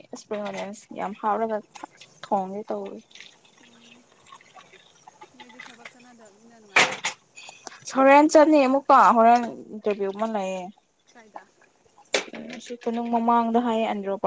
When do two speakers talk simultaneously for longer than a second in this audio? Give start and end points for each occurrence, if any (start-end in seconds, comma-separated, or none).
none